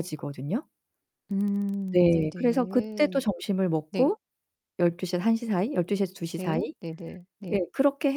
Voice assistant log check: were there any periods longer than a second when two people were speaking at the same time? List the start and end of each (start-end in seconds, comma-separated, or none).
1.9-3.2